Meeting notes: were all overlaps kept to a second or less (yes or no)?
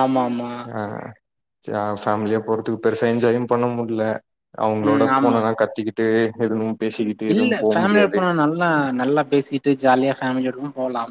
yes